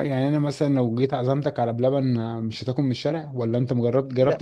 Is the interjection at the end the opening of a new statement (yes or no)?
yes